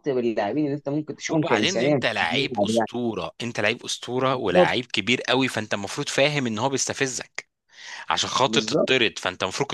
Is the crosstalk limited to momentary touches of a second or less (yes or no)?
no